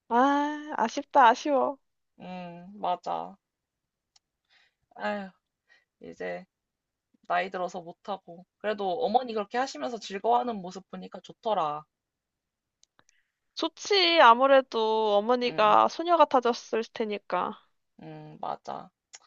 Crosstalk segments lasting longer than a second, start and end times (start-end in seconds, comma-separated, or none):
none